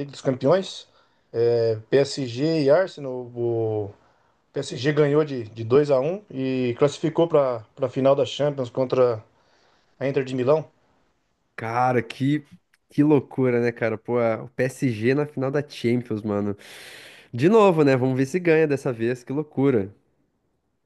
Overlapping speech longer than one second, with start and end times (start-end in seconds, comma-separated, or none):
none